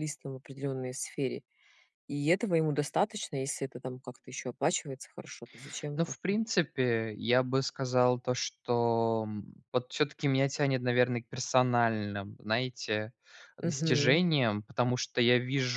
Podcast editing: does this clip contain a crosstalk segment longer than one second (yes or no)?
no